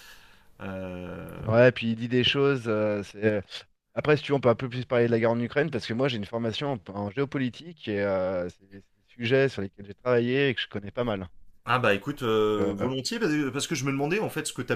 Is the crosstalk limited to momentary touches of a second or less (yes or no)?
yes